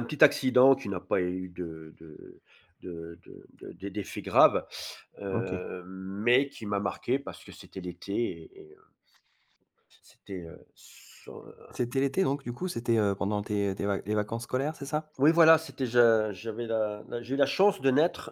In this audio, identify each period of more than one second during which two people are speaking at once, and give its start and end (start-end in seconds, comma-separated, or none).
none